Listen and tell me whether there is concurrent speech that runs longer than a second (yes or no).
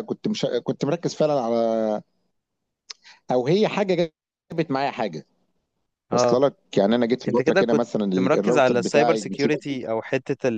yes